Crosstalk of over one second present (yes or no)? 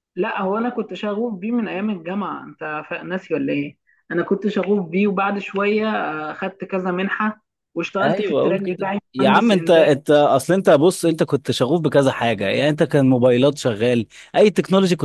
yes